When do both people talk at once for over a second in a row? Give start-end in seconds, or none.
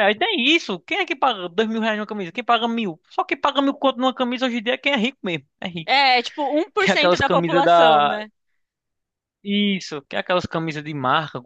6.8-8.2